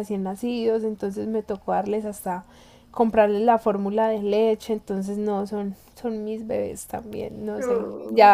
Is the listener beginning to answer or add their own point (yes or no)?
no